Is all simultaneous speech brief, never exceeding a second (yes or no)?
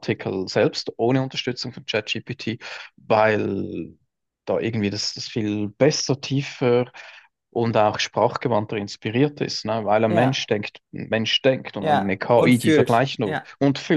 no